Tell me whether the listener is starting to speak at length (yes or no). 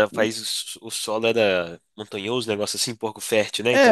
yes